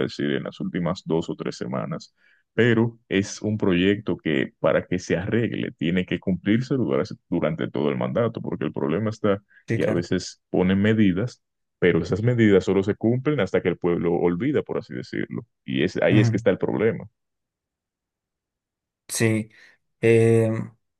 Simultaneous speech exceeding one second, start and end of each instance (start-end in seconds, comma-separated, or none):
none